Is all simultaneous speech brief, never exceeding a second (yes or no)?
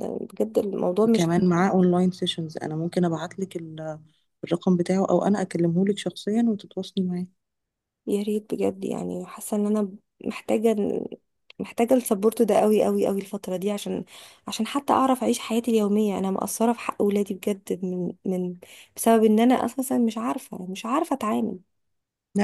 yes